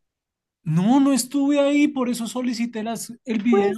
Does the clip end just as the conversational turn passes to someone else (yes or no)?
yes